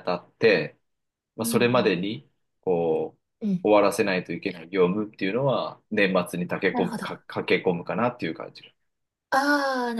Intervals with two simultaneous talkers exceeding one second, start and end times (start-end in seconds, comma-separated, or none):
none